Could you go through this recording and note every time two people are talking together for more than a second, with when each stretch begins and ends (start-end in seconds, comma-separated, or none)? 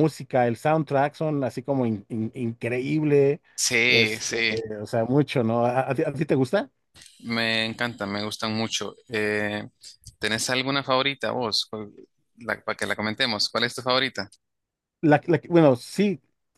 none